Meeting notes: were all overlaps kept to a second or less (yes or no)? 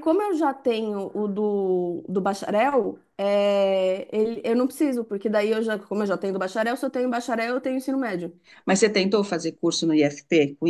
yes